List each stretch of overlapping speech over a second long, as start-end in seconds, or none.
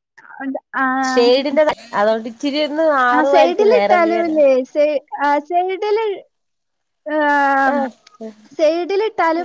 3.2-4.4